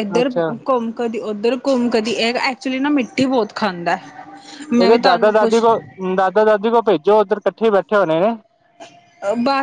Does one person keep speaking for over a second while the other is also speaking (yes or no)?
no